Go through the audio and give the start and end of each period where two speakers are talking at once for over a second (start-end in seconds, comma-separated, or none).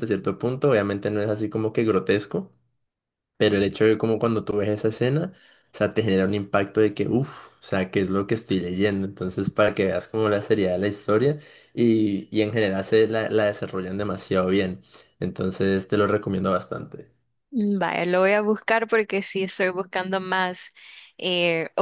none